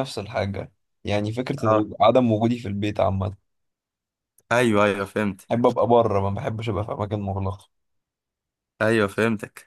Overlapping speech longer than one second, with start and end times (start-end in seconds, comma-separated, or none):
none